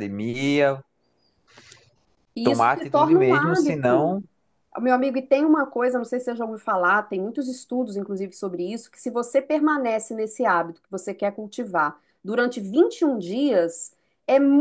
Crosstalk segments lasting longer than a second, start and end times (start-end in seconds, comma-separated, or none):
2.4-4.2